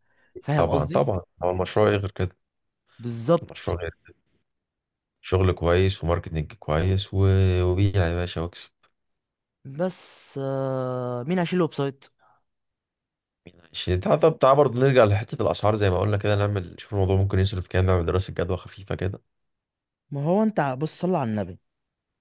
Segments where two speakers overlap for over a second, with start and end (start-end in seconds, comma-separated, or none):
none